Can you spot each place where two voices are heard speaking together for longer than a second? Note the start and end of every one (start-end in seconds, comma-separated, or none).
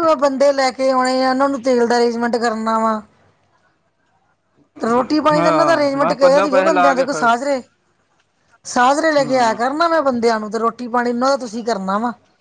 5.3-7.3